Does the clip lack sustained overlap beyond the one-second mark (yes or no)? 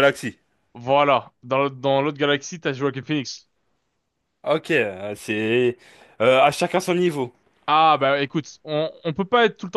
yes